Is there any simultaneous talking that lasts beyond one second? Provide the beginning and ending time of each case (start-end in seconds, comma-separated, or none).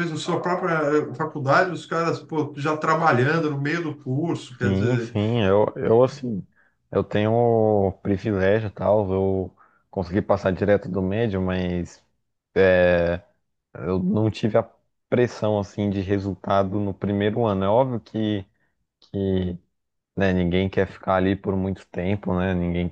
none